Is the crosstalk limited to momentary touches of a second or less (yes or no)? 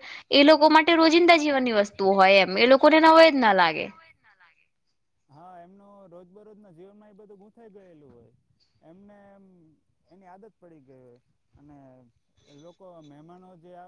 yes